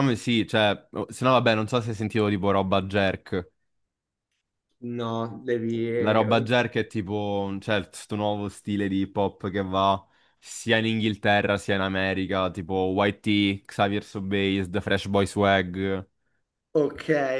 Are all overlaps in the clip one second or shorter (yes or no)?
yes